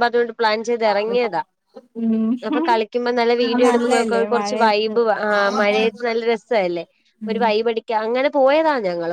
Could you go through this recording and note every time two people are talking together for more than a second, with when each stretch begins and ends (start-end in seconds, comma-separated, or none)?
3.5-4.9